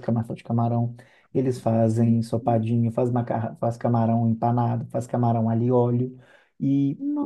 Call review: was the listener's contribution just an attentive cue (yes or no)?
yes